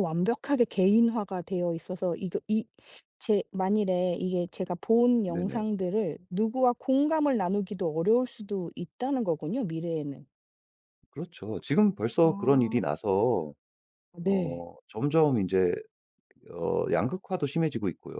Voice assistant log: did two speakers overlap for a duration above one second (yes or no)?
no